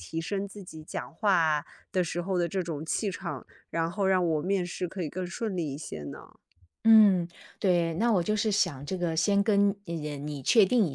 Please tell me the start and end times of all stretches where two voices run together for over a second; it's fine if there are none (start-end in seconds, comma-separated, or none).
none